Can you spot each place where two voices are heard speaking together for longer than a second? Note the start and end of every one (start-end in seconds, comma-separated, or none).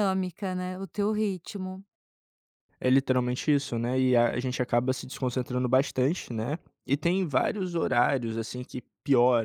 none